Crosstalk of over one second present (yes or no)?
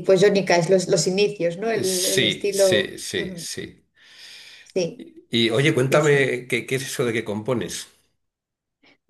yes